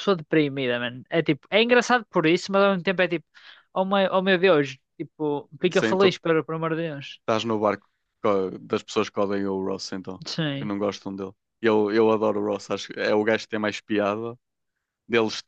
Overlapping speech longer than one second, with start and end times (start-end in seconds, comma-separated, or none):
none